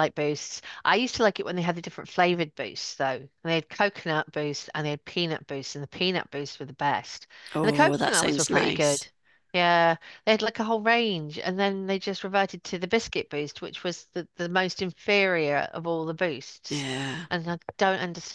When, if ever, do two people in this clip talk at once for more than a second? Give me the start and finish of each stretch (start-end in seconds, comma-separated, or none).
7.5-9.1